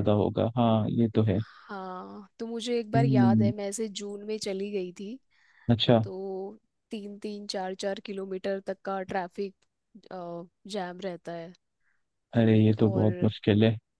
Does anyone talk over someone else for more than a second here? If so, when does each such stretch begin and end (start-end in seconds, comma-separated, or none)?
none